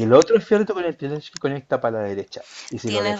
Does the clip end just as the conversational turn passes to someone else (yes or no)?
no